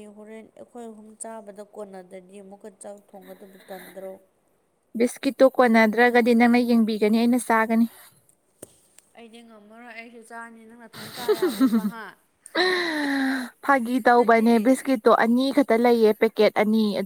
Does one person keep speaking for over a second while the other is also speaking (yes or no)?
no